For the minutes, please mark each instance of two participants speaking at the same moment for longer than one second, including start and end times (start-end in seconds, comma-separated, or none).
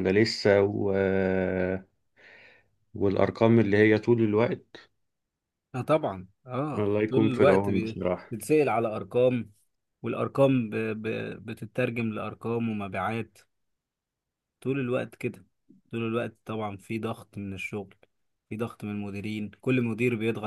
6.8-8.3